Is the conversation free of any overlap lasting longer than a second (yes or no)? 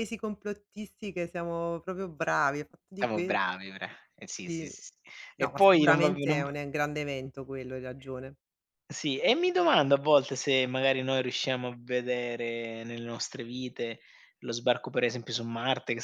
no